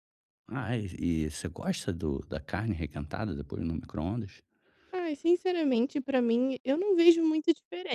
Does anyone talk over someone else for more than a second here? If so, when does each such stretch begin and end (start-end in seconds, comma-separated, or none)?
none